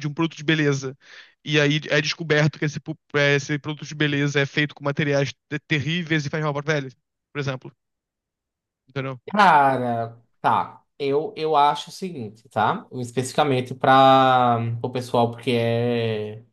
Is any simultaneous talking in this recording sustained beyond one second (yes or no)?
no